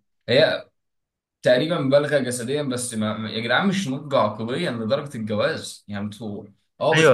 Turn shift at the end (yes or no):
yes